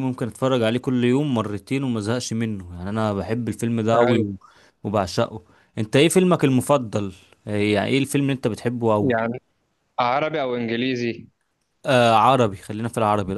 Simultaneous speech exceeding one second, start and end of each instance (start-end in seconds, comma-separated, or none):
none